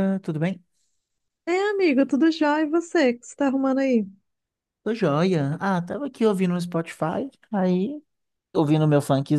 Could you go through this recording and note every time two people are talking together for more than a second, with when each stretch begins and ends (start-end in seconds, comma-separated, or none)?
none